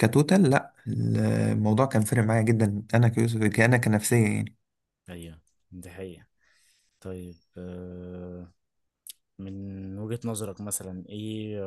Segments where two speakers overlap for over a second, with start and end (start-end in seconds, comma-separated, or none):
none